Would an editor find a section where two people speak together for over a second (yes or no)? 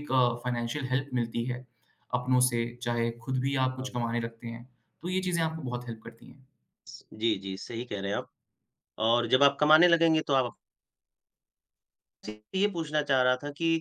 no